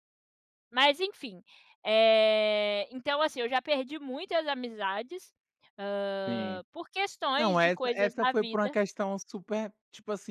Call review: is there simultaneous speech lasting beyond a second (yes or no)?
yes